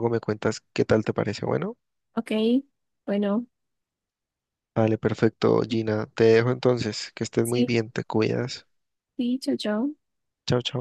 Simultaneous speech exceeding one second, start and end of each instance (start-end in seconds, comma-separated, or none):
none